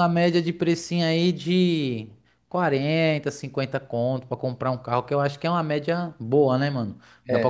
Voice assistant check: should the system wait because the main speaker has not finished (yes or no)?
yes